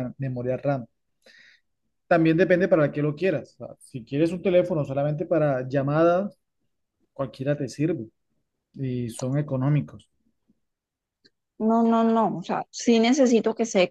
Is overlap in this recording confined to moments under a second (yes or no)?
yes